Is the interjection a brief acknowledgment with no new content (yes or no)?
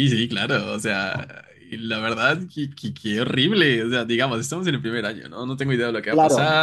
yes